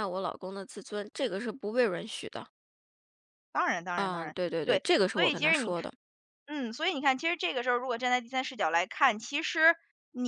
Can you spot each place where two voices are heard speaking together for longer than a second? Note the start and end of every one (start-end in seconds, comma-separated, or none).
4.0-5.9